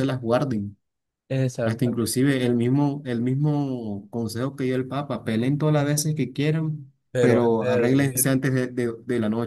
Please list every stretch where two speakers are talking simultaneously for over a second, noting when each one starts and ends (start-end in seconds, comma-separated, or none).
7.1-8.3